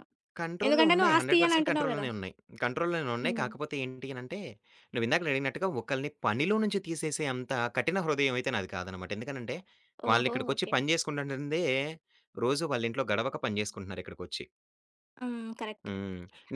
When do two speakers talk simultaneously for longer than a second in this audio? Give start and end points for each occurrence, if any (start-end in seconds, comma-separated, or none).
0.7-2.0